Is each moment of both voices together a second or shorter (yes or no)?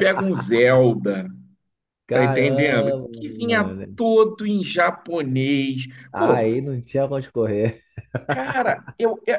no